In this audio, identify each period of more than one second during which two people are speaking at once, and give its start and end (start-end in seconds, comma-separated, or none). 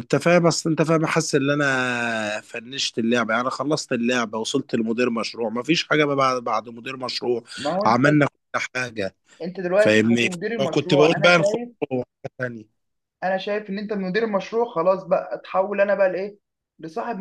9.8-11.7